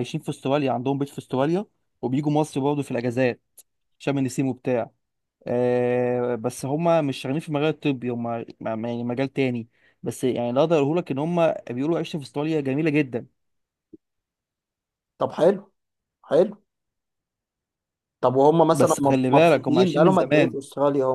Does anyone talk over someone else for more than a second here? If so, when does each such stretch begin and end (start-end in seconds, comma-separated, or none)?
18.7-20.6